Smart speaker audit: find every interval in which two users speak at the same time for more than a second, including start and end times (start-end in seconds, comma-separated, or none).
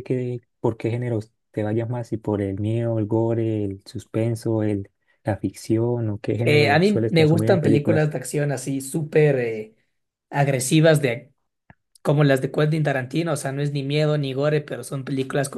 6.4-8.1